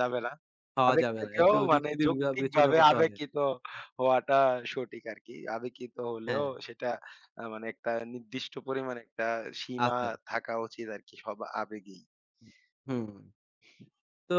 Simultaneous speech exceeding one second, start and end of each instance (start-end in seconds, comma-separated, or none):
0.9-3.1